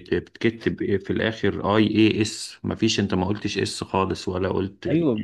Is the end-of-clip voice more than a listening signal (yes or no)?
yes